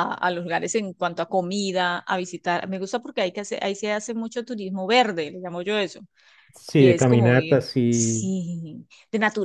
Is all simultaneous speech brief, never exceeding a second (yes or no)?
no